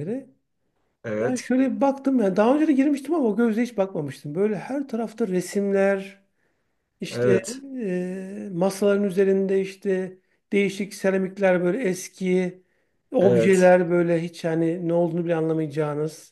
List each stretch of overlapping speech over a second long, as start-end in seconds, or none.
none